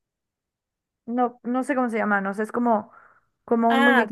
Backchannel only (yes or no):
yes